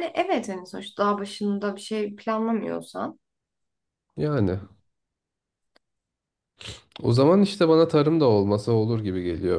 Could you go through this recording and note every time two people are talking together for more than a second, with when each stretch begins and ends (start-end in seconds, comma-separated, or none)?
none